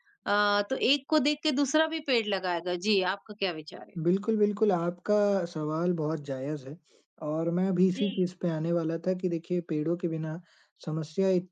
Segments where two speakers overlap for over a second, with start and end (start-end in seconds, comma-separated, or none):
none